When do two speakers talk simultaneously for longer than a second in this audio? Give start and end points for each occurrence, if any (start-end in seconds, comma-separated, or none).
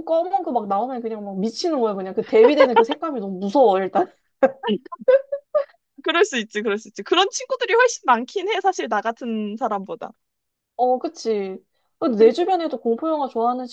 none